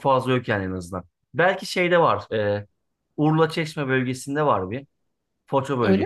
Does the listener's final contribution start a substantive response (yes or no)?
no